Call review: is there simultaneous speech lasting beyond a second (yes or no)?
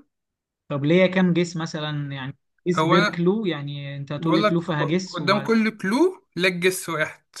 yes